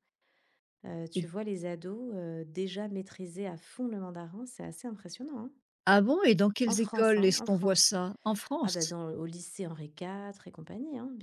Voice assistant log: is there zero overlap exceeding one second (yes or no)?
no